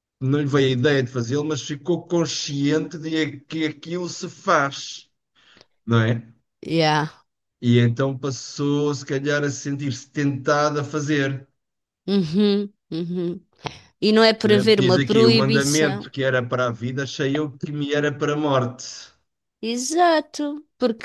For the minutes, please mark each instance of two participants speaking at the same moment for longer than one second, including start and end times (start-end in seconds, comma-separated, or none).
14.4-16.1